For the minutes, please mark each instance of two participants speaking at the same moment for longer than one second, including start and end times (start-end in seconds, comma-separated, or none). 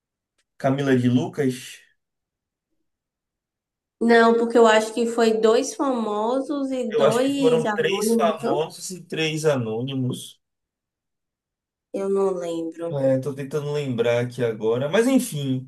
6.9-8.6